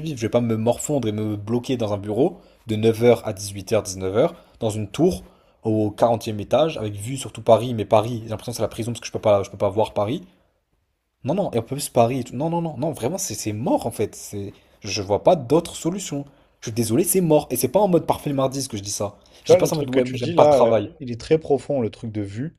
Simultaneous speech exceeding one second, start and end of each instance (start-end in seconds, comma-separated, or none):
19.4-20.9